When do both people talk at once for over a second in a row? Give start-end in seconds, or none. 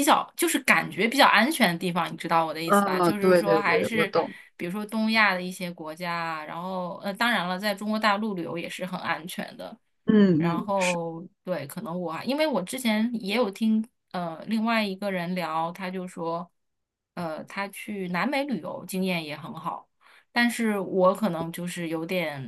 2.6-4.1